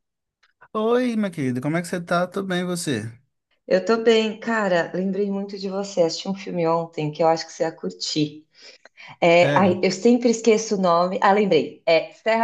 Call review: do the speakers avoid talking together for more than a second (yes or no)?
yes